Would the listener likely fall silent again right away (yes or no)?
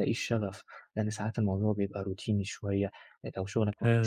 yes